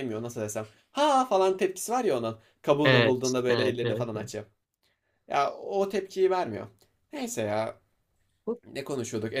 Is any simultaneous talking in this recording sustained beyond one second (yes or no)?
yes